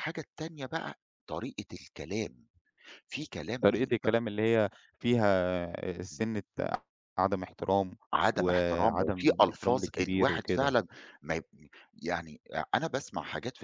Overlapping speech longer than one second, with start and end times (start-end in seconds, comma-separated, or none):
8.4-10.8